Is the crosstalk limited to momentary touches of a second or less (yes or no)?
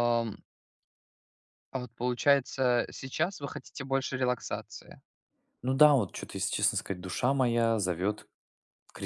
yes